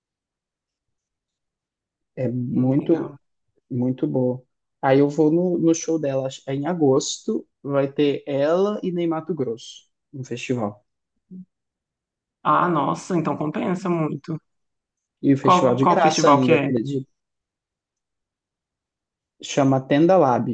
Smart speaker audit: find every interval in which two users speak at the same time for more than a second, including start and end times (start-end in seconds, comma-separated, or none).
15.4-16.8